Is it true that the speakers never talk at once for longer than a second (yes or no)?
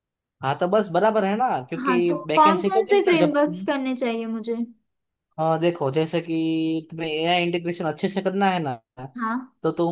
no